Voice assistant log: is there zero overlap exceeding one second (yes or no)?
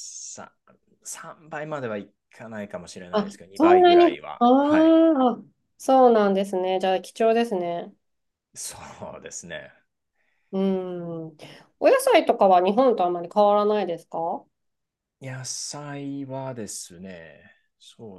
no